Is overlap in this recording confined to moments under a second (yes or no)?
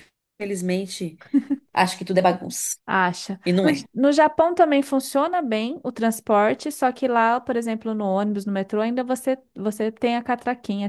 yes